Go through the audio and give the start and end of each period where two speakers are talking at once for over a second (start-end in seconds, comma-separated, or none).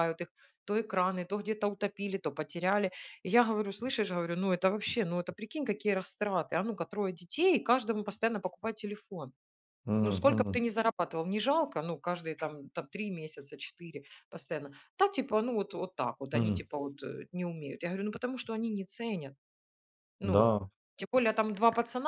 none